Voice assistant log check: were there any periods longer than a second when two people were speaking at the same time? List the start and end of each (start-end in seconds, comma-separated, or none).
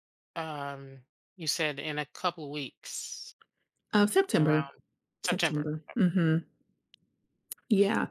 none